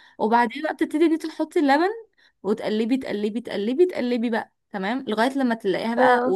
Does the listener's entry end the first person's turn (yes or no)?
no